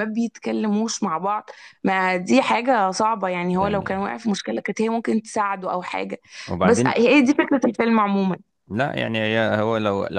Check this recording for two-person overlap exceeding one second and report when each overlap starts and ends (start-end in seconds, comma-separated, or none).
none